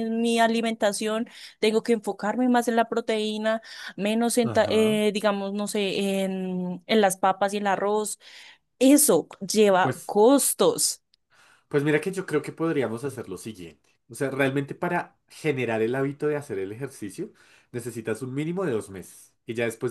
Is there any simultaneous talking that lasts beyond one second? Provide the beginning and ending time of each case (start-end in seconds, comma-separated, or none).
none